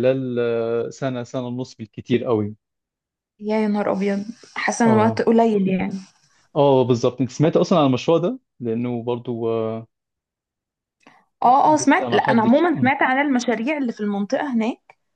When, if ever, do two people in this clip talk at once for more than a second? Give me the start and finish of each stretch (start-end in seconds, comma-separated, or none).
11.6-12.9